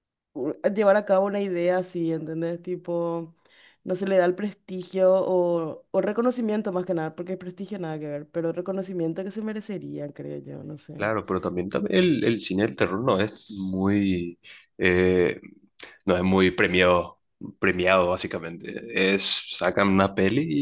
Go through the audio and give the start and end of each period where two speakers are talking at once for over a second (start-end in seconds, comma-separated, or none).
none